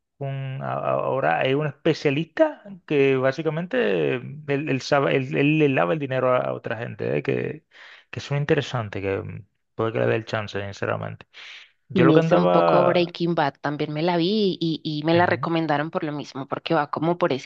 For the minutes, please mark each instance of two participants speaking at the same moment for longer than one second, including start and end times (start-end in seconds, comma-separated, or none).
11.9-13.1